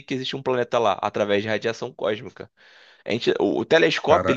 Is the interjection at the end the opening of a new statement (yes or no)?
no